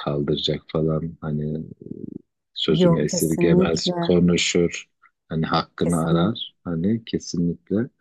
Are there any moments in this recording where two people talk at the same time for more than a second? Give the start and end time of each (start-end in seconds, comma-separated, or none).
2.8-4.1